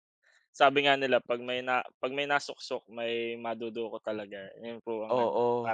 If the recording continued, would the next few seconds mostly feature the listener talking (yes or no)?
yes